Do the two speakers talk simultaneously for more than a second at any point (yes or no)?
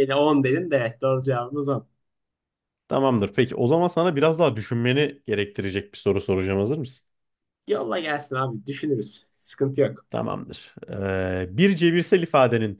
no